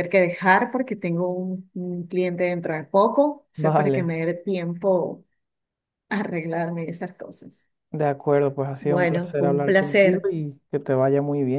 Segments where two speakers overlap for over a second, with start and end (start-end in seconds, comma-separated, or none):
8.8-10.3